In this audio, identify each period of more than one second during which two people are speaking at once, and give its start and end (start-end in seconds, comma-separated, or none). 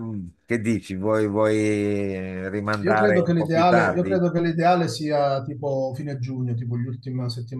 2.8-4.2